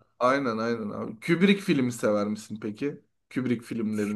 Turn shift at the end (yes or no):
yes